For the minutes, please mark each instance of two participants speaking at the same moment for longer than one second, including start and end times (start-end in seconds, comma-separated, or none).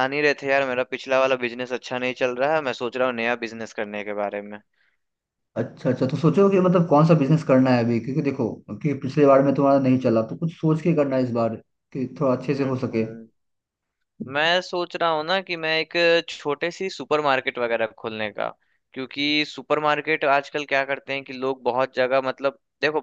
none